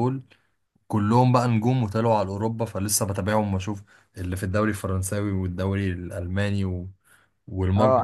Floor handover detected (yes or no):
yes